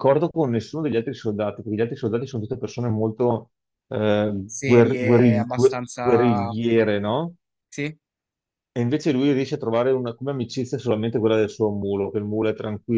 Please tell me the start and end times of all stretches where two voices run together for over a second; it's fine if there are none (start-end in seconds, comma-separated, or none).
4.5-6.5